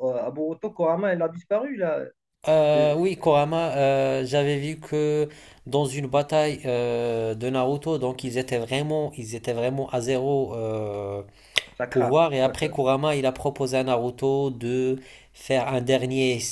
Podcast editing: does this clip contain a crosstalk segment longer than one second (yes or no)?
no